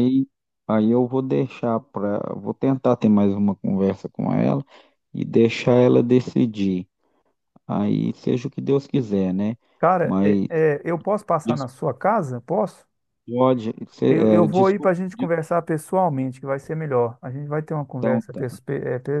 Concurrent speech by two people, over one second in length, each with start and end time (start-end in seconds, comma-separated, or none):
14.1-15.3